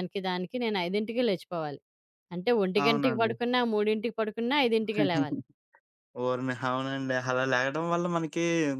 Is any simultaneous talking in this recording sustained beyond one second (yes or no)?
no